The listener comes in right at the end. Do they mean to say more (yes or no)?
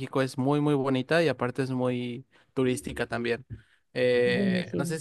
no